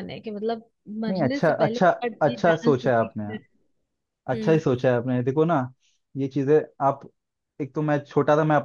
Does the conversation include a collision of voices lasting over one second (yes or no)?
yes